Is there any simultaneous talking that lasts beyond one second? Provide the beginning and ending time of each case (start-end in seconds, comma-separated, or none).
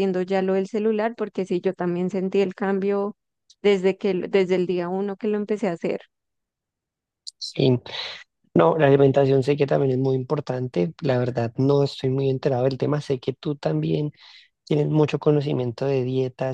none